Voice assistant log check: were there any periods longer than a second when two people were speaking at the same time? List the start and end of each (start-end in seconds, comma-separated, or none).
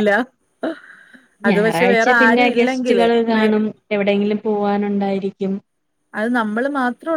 1.5-3.5